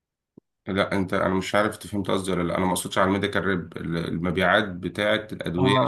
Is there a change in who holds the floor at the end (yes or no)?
no